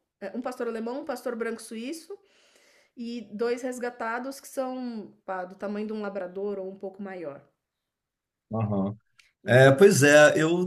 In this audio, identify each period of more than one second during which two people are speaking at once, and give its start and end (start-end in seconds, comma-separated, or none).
none